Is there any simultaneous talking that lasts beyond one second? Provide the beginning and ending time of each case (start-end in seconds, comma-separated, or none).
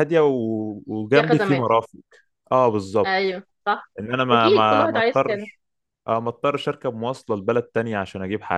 4.3-5.5